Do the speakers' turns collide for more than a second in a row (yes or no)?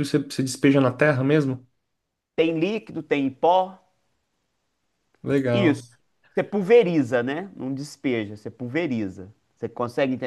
no